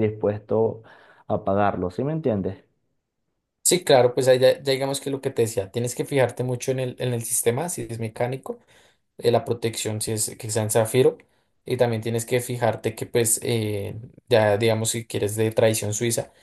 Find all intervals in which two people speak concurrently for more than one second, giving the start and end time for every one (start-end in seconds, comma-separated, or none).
none